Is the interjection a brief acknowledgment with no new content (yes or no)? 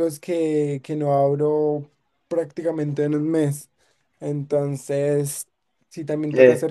yes